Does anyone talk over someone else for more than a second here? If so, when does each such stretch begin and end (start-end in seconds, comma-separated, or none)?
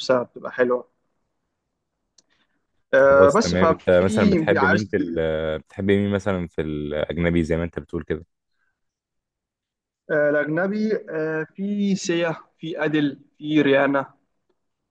2.9-4.9